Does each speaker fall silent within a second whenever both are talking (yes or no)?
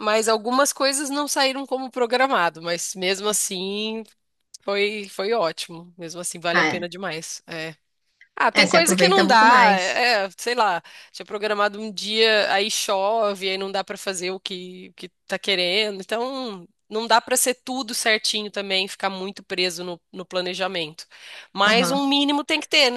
no